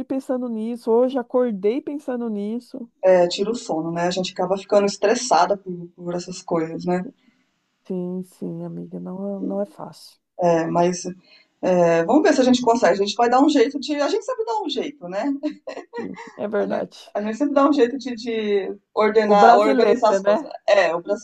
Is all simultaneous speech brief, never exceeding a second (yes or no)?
no